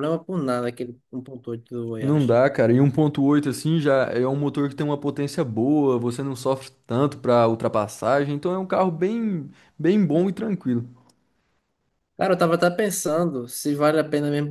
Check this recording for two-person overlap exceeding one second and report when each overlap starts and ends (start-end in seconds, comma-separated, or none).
none